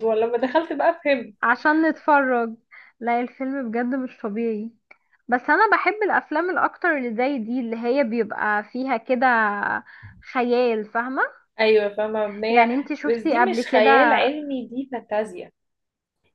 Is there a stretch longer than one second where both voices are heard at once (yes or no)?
yes